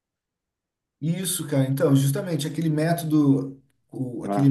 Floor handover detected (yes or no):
no